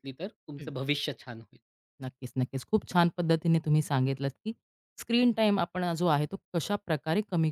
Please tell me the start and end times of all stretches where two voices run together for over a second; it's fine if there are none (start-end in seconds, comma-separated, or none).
none